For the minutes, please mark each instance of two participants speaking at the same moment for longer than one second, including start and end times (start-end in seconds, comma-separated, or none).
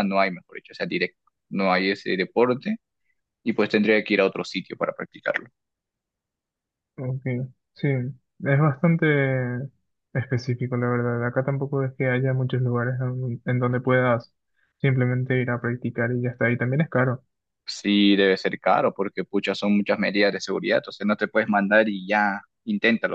none